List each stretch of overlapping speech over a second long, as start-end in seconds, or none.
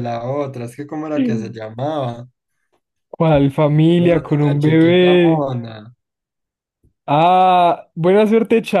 3.9-5.4